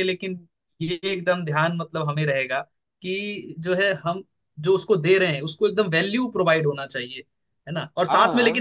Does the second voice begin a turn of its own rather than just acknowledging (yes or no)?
no